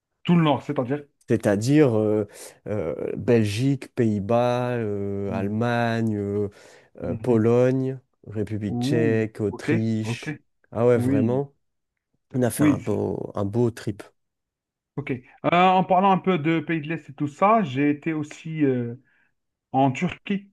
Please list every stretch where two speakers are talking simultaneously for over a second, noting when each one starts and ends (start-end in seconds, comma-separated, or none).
8.7-10.3